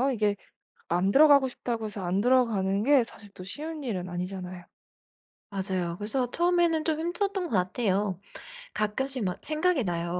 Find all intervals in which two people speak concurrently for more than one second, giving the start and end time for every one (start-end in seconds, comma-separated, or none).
none